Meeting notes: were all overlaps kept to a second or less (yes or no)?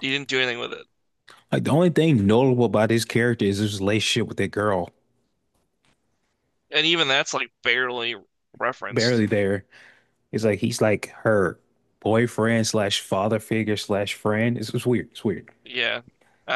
yes